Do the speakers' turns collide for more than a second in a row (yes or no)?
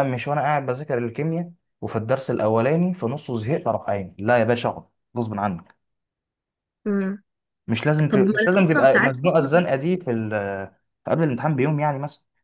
yes